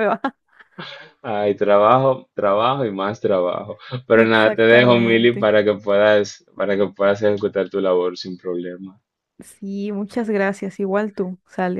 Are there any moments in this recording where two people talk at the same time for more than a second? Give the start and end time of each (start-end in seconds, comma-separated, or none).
4.2-5.5